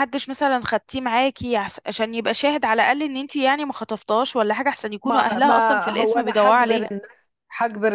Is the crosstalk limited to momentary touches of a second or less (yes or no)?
no